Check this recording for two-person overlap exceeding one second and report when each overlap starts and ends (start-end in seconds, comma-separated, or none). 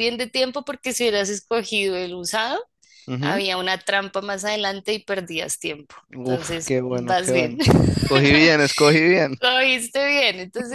6.2-7.6